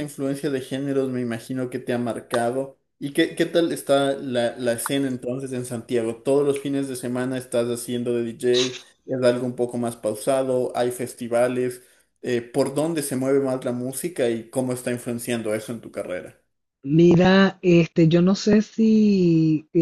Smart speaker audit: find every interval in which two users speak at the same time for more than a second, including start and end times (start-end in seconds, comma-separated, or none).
none